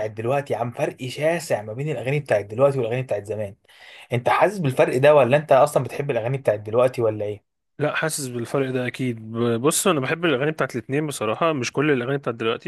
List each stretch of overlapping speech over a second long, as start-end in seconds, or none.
none